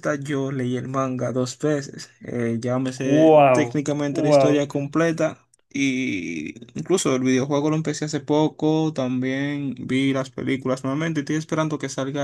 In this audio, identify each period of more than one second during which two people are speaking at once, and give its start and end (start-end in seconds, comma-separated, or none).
3.0-4.7